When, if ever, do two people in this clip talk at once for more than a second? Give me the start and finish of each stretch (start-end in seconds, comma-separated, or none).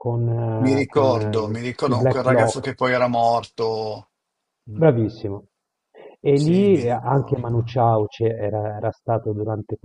0.6-2.7, 6.3-7.8